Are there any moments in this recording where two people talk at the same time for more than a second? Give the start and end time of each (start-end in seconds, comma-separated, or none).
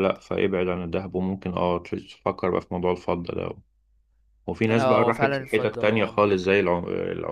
4.7-6.3